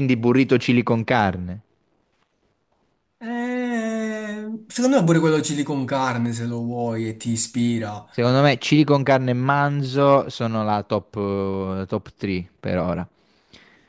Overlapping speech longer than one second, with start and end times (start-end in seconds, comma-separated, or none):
none